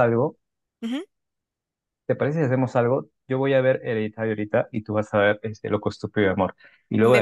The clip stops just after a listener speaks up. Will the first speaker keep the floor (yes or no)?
yes